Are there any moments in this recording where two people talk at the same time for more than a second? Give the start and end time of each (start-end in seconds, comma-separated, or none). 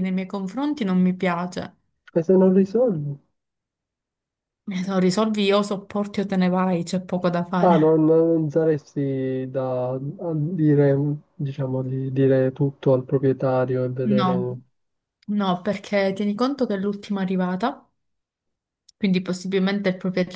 none